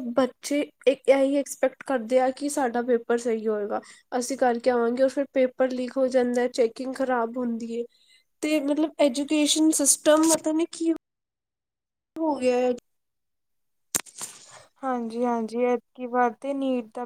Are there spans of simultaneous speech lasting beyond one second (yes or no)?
no